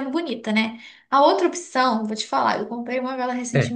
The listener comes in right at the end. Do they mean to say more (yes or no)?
no